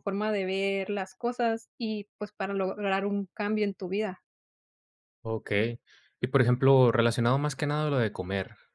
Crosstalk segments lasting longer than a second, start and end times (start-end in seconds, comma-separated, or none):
none